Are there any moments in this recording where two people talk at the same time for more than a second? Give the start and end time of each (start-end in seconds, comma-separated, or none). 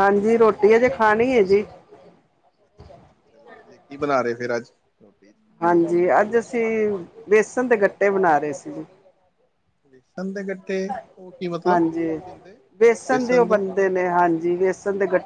none